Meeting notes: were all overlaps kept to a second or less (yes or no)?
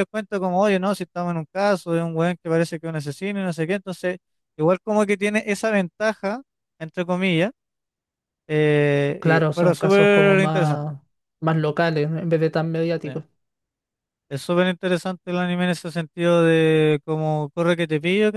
no